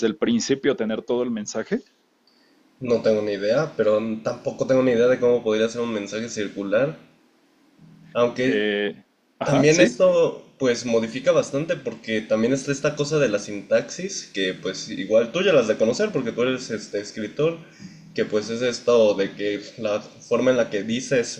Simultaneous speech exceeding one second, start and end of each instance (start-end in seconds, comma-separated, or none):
none